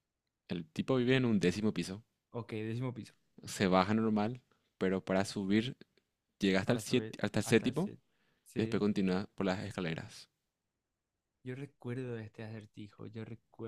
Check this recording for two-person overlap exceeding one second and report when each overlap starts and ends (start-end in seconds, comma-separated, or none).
6.6-7.9